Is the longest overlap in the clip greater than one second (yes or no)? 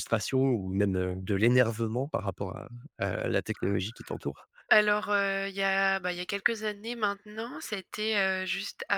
no